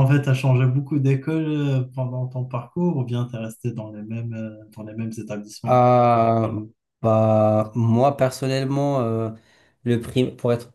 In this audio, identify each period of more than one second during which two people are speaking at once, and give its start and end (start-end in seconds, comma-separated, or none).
none